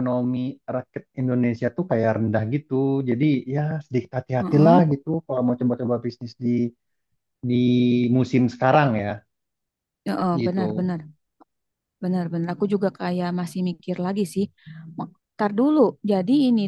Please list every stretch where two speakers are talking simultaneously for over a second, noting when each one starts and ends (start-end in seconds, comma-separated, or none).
none